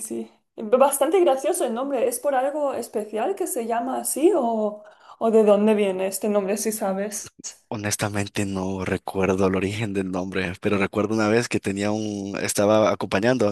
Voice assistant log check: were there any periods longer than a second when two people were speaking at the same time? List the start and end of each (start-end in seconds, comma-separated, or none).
none